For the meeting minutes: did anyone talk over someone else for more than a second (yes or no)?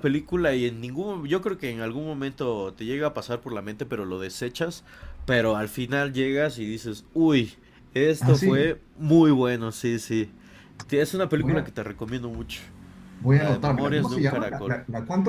yes